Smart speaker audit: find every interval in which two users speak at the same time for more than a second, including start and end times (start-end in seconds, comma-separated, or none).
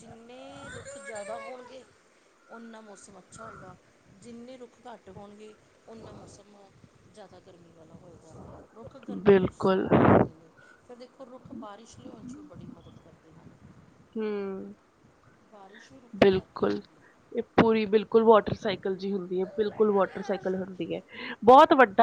none